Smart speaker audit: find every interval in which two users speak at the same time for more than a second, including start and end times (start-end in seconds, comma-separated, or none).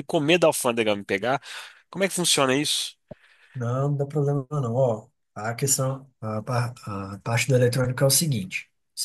none